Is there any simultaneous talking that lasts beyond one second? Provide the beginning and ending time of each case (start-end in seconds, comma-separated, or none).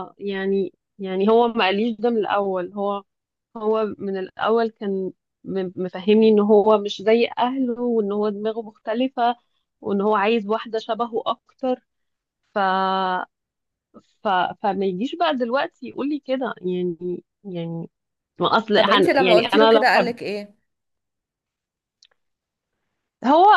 18.8-20.1